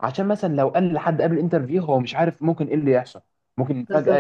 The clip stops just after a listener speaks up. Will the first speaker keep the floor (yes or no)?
yes